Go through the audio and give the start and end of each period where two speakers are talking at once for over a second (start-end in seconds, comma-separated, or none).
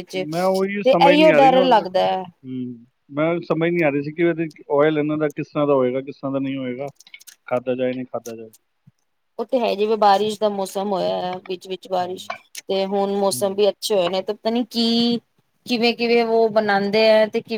0.8-2.2